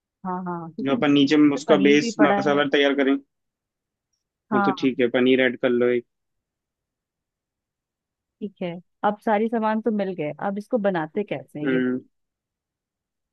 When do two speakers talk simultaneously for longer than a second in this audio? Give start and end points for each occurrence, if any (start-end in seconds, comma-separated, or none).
0.8-2.6